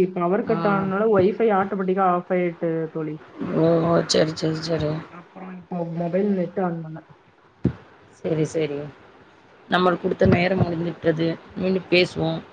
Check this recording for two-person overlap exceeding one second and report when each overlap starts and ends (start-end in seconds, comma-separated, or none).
none